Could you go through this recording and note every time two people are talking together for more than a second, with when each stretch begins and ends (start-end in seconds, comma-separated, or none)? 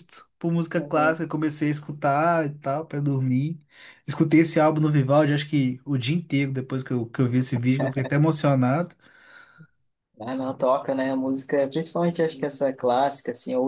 none